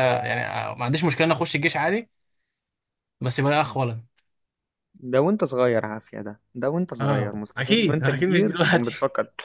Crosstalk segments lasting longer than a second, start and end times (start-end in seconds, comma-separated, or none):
7.0-8.9